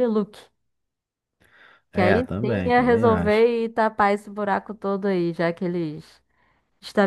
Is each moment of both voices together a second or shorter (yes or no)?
no